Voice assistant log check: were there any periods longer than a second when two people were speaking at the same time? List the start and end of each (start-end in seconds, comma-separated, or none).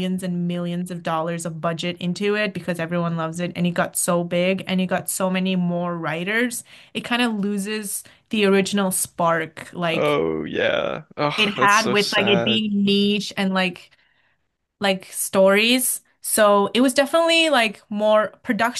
11.3-12.6